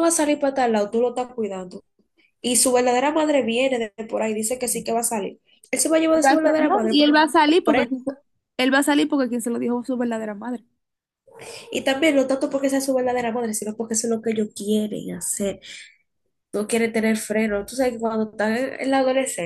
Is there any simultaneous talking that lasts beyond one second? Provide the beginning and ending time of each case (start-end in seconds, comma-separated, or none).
6.2-7.9